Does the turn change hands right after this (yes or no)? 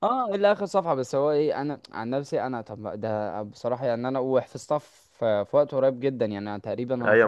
yes